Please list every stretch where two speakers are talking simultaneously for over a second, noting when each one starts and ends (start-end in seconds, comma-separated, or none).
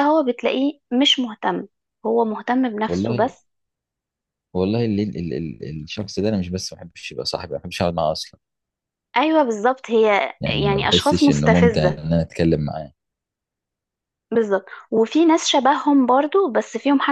10.4-12.0